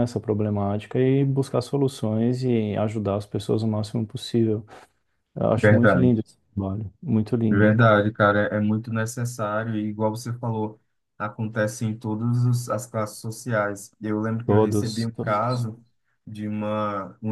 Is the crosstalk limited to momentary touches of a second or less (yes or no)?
no